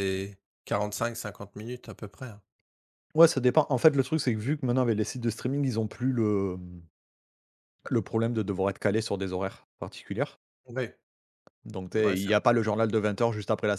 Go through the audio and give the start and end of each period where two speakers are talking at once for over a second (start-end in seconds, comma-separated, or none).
none